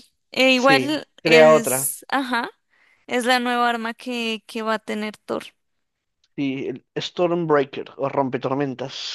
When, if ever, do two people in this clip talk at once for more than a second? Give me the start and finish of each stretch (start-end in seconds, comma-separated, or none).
0.6-1.9